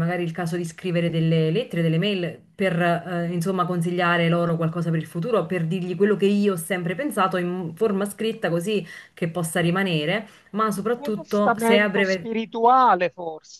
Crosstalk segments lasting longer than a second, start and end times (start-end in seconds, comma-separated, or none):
10.8-12.3